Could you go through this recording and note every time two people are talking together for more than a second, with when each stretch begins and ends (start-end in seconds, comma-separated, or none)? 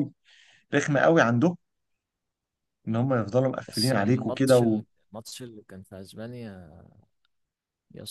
3.6-4.8